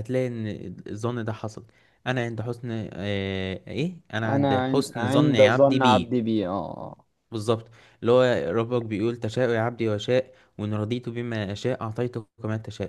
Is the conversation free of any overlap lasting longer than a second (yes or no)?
no